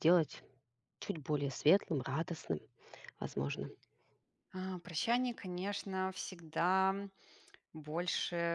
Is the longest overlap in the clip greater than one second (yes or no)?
no